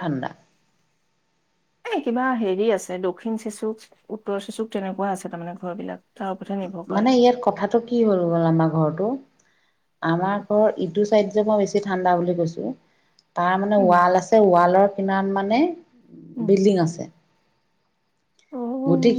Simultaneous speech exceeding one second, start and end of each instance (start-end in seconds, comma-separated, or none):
none